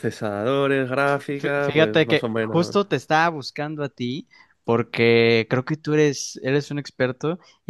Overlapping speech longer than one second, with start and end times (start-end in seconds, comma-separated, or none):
1.4-2.8